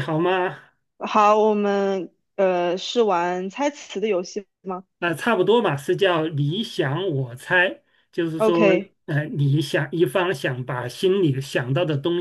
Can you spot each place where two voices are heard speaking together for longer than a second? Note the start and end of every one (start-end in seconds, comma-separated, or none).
none